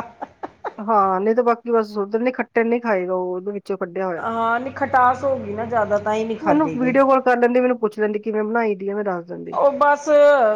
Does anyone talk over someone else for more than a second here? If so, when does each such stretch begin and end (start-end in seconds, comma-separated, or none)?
none